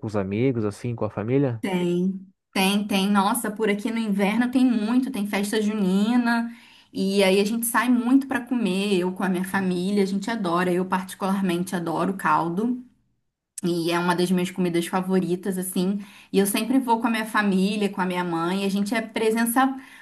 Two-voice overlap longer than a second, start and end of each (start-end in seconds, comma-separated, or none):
none